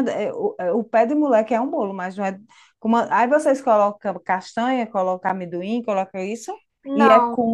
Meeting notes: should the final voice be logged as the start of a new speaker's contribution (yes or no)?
no